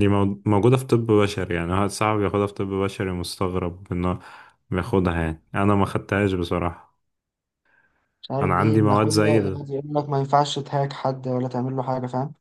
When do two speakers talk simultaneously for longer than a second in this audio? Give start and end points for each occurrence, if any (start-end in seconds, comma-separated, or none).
8.4-9.6